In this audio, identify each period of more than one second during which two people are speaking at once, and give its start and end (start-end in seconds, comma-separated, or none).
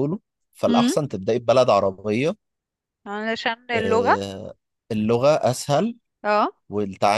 none